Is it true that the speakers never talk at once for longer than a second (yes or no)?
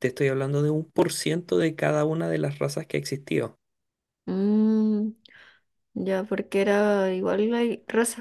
yes